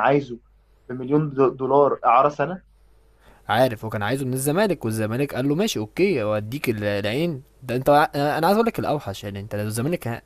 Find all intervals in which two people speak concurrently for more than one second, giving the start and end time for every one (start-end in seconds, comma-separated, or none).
none